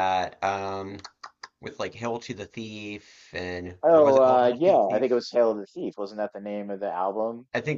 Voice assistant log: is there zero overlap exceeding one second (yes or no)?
no